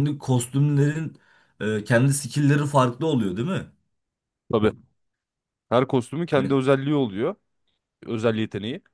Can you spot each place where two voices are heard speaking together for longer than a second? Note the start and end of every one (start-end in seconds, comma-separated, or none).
none